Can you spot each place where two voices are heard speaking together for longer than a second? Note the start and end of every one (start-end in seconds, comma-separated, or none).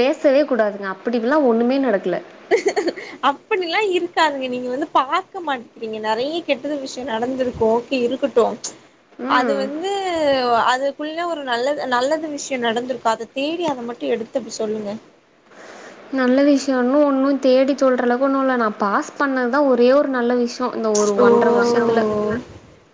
none